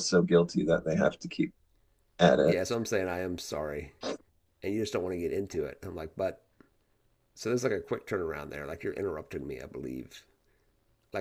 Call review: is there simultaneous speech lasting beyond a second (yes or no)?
no